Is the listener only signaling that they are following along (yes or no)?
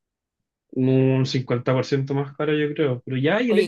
yes